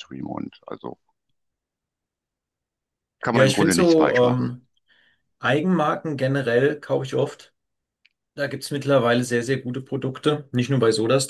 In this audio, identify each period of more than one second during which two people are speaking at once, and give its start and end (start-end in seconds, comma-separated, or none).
3.3-4.5